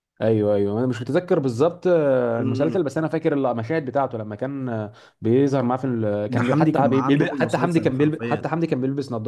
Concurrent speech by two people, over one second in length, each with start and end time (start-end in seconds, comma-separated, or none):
6.3-8.5